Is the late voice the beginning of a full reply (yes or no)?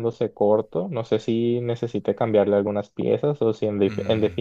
no